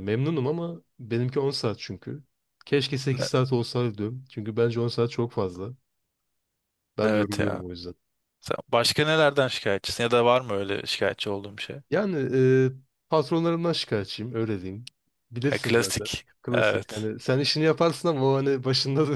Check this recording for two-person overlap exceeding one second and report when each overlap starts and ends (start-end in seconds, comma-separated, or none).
15.5-17.1